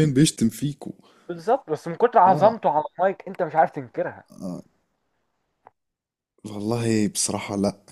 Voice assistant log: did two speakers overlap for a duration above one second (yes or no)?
no